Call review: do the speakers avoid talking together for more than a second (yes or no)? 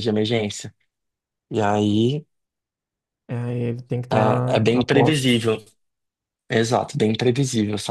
no